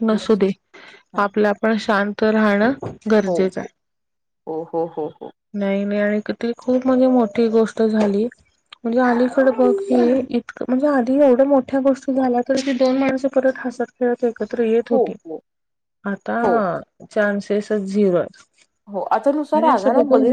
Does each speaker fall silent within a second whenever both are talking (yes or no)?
yes